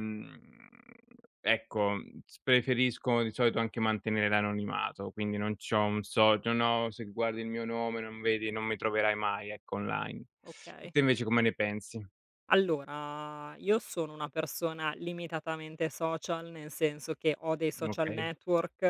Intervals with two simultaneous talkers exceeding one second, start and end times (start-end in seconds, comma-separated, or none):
none